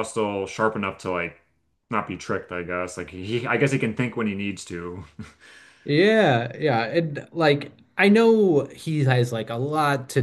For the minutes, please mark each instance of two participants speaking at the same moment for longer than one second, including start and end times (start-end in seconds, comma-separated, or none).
none